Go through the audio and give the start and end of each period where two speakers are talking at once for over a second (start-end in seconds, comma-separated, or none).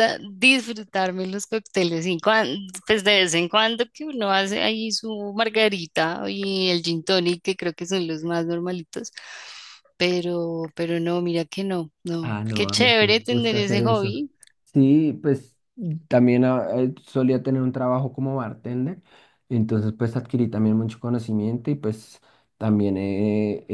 12.3-14.1